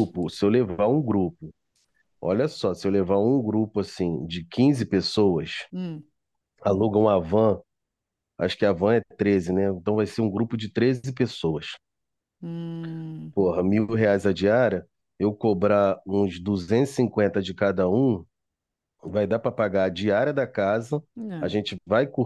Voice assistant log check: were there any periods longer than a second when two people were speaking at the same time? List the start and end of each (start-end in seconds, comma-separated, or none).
none